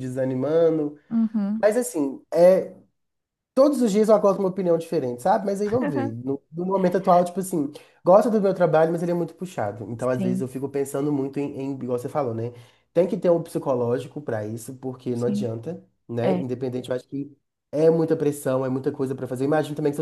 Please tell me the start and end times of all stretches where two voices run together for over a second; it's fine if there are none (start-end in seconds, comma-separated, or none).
none